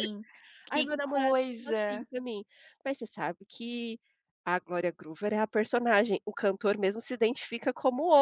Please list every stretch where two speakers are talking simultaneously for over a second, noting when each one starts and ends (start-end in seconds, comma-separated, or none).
0.7-2.1